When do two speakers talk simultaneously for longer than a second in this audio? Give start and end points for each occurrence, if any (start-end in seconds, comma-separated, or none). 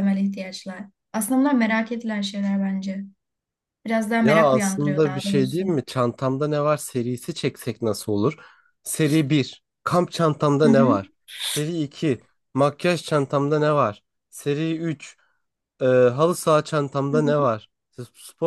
4.2-5.6